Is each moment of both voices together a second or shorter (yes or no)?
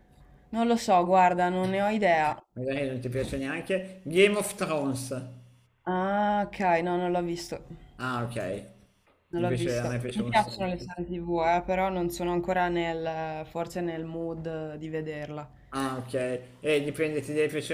no